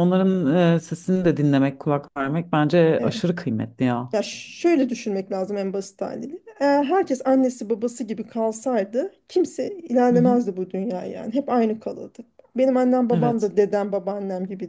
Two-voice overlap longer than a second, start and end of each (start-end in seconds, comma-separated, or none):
none